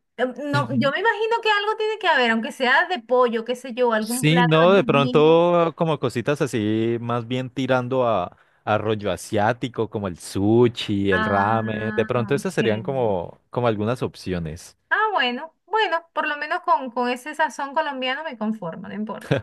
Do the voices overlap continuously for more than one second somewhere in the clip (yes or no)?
yes